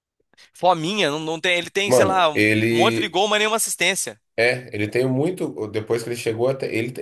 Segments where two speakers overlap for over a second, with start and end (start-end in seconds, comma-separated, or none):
1.9-3.1